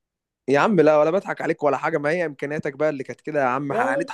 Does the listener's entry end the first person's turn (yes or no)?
yes